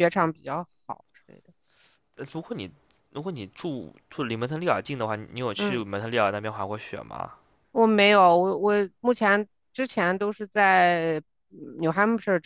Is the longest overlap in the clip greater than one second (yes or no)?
no